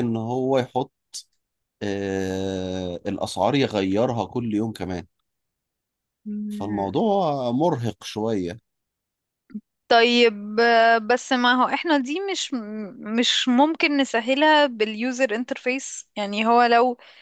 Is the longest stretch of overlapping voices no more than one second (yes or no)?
yes